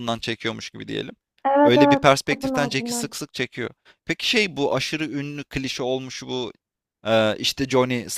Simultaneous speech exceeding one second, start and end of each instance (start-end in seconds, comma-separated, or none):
1.6-3.2